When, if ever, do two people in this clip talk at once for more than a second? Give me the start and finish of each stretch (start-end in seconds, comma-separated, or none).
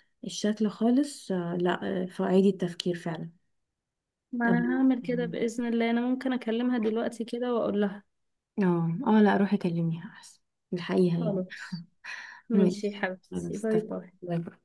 12.5-14.1